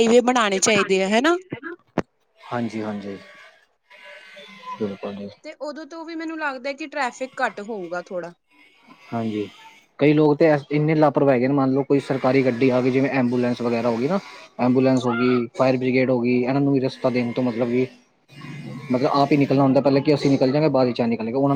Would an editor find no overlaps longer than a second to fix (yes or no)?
yes